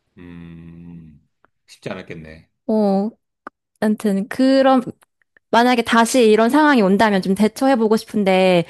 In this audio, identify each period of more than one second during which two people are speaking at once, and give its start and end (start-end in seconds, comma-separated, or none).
none